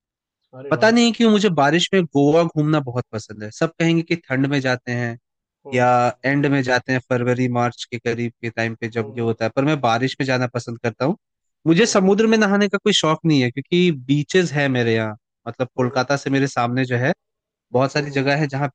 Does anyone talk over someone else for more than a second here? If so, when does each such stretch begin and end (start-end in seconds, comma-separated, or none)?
none